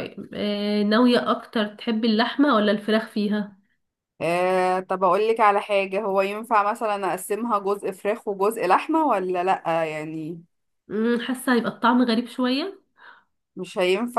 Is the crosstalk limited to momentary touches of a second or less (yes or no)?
yes